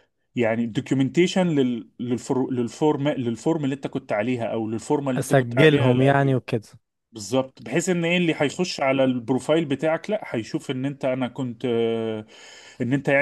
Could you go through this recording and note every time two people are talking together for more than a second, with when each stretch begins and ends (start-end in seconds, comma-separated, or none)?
5.2-6.4